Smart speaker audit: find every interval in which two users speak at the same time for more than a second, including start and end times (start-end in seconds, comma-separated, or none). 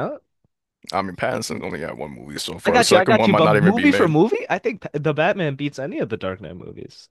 2.6-4.2